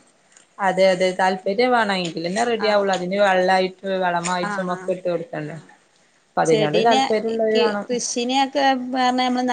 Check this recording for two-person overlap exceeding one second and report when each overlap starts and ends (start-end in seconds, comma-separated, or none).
none